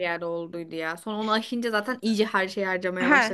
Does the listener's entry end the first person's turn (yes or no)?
yes